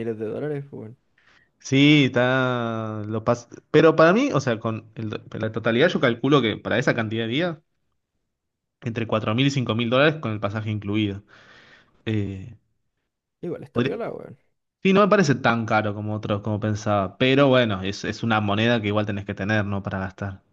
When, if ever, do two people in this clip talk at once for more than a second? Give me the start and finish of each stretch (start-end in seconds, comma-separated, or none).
none